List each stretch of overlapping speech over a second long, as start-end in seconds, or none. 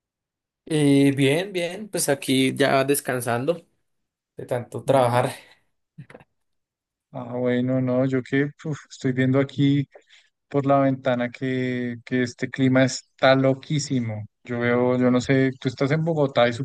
none